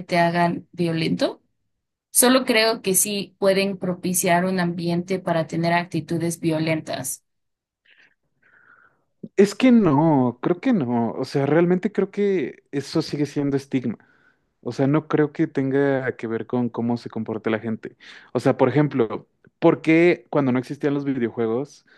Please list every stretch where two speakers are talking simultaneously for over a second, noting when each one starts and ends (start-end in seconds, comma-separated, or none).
none